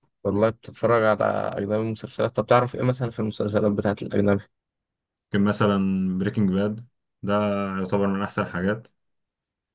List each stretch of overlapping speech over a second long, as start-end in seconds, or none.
none